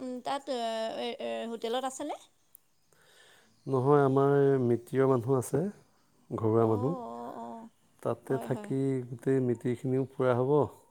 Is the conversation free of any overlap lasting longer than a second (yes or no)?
yes